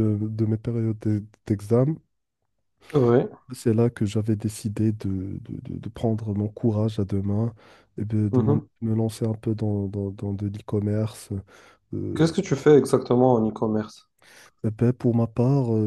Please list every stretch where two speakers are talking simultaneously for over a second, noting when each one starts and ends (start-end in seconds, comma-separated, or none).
none